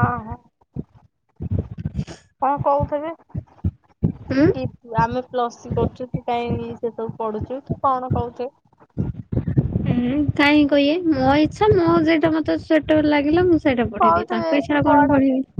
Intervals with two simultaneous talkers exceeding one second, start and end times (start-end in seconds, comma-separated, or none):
none